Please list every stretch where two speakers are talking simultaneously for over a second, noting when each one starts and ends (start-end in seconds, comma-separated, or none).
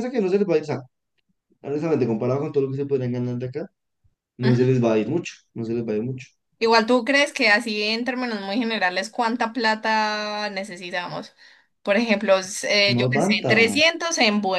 none